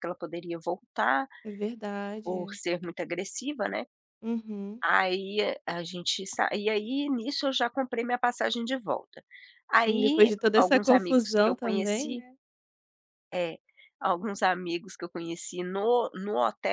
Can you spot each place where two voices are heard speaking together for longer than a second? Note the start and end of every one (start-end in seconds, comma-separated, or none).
9.7-12.2